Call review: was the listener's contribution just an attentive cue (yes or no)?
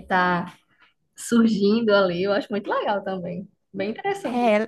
no